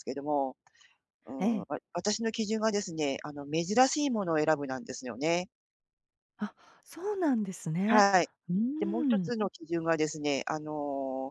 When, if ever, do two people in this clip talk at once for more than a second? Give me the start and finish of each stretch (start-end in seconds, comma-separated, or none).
none